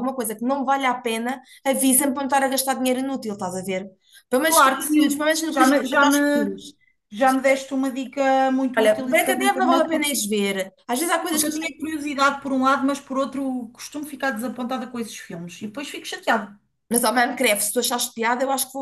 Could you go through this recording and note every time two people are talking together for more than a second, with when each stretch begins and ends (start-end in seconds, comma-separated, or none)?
4.4-6.5, 8.8-10.1